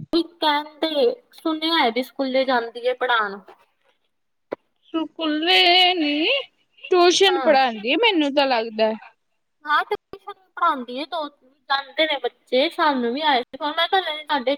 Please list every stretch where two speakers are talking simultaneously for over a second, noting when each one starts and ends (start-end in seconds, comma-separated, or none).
none